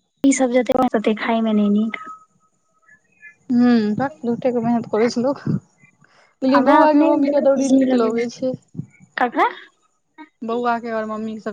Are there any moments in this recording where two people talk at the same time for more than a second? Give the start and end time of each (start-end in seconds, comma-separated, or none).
6.5-8.2